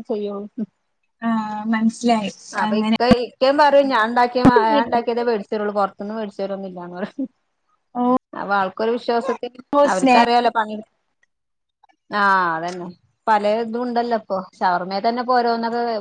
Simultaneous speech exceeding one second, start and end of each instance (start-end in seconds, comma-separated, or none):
none